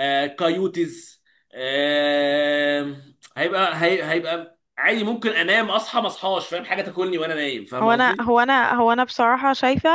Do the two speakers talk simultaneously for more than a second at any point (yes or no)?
no